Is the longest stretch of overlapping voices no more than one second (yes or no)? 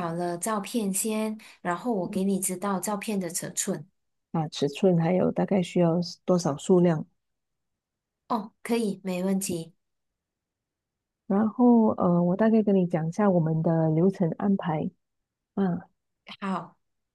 yes